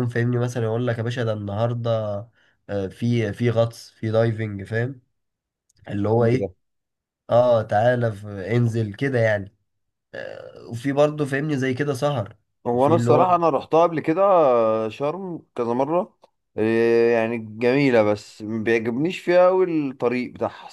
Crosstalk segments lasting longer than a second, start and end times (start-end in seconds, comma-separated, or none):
none